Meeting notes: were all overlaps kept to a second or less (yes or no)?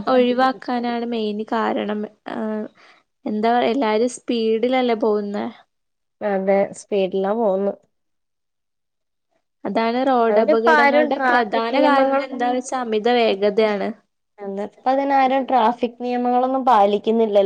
no